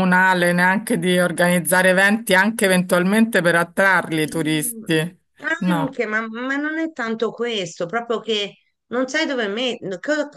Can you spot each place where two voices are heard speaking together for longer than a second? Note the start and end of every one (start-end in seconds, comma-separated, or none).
none